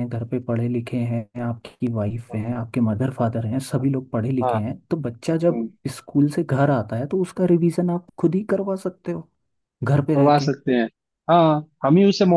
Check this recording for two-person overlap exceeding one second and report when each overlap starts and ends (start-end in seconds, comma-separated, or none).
none